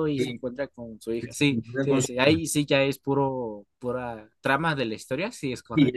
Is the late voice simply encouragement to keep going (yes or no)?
no